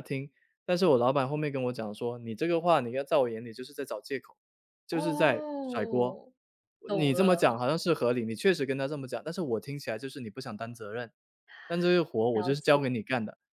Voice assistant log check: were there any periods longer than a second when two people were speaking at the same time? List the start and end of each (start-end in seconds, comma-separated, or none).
4.9-6.2